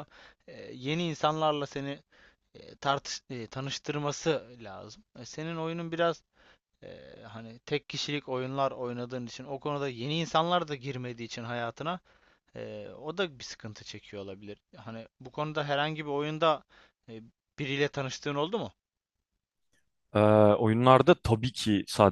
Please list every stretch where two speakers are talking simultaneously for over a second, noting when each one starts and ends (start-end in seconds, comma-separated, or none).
none